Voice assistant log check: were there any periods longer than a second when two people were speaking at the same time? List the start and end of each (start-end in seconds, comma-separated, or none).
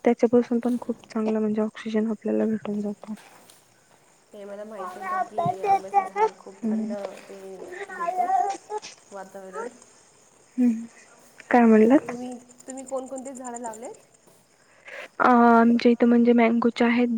none